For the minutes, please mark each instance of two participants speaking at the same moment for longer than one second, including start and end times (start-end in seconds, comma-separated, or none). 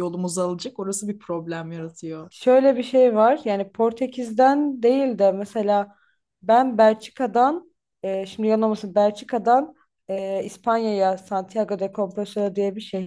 none